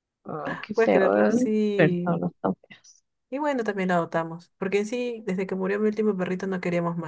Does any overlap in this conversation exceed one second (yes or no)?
yes